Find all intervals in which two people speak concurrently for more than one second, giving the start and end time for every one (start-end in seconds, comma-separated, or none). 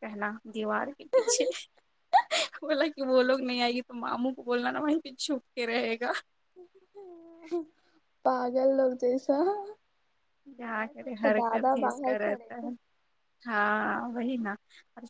10.6-12.7